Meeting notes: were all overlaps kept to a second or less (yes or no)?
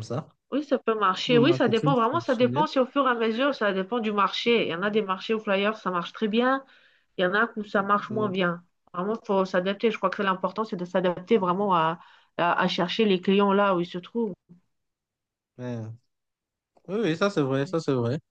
no